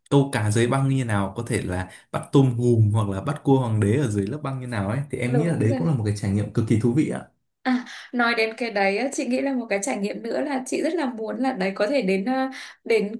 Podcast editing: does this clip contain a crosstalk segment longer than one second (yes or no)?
no